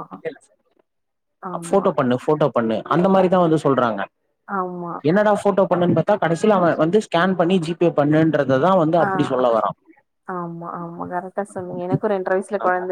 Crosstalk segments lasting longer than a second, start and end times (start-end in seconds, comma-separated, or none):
none